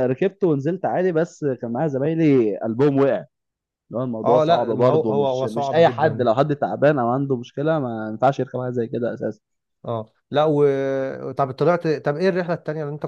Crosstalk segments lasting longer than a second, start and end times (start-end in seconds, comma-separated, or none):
4.2-6.3